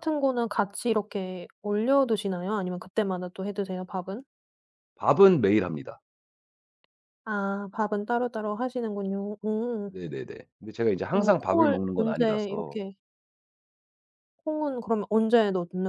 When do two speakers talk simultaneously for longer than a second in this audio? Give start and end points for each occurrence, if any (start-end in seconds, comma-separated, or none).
11.1-12.8